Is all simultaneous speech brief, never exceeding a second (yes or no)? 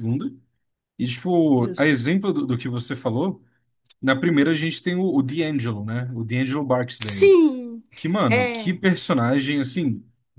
yes